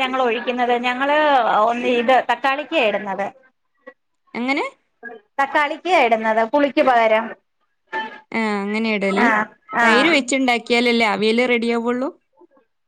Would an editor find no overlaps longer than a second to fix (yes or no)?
yes